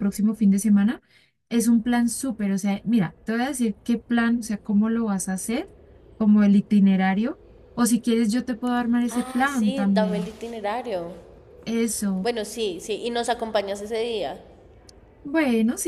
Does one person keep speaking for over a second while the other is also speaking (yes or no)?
yes